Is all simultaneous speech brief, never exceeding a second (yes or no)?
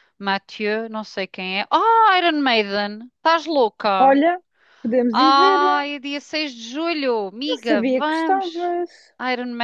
no